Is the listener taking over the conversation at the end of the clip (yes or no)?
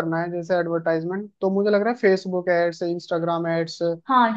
yes